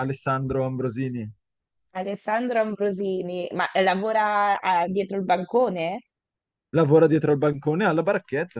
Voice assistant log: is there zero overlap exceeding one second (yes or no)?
yes